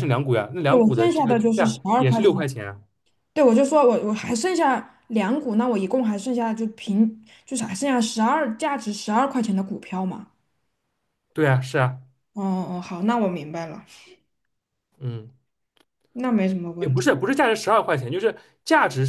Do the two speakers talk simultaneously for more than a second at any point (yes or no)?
yes